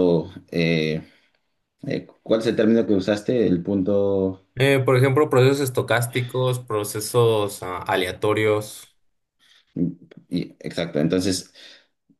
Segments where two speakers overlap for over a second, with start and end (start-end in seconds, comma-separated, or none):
none